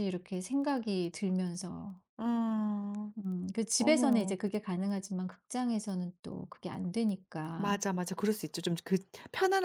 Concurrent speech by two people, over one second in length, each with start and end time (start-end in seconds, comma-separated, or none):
none